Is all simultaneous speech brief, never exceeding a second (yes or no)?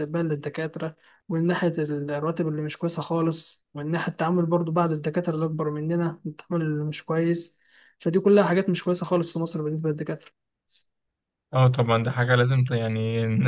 yes